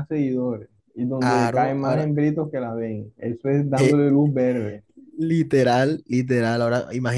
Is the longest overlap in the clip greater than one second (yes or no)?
no